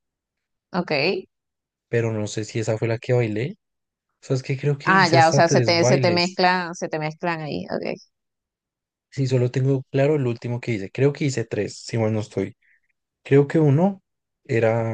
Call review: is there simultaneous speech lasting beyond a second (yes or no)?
yes